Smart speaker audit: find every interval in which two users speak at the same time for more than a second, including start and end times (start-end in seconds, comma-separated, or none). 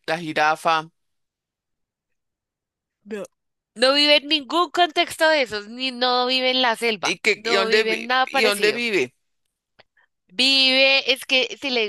7.0-8.8